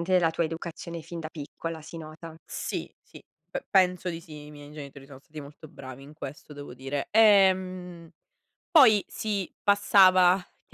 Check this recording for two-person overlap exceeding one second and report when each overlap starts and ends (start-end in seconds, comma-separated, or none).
none